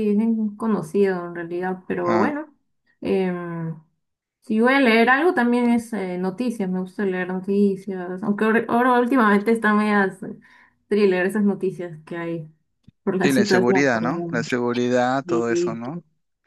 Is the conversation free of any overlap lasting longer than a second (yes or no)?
no